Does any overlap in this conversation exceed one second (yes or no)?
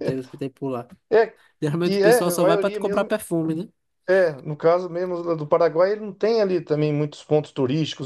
yes